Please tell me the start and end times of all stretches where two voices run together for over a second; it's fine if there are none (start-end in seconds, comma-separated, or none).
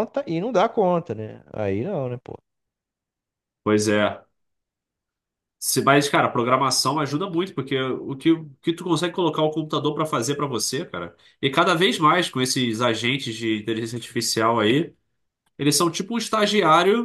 none